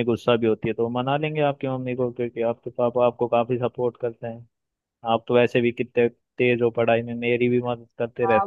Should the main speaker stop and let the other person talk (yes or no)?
yes